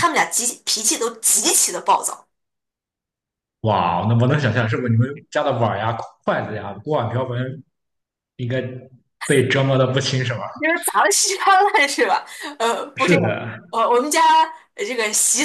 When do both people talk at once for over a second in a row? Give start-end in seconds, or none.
none